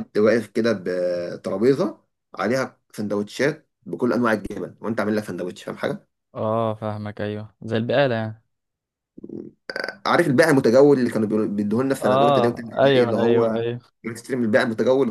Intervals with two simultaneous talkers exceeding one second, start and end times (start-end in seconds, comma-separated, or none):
12.0-13.6